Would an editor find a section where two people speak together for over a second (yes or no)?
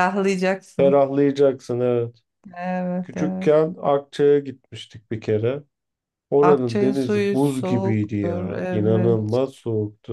yes